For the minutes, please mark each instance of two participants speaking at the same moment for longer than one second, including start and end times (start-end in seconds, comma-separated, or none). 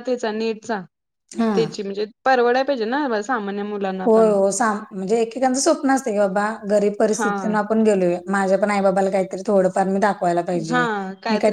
none